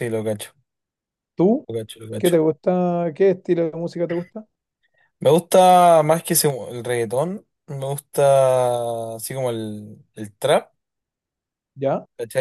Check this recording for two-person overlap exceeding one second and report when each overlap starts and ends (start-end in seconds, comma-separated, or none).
none